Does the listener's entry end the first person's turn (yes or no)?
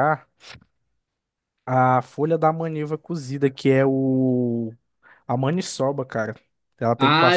yes